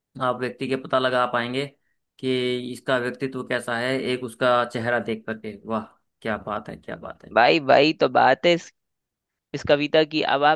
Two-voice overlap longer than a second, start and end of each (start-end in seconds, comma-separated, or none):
none